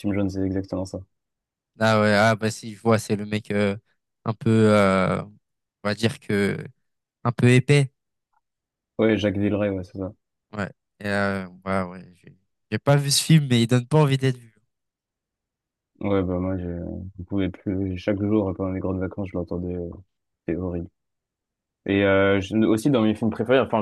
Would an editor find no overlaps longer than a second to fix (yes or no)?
yes